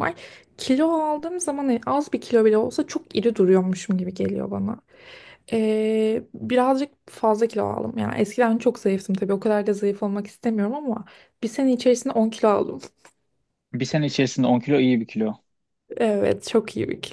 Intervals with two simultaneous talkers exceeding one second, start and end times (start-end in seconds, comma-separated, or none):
none